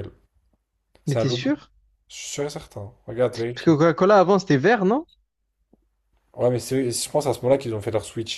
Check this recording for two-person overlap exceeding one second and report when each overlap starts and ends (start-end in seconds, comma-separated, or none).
none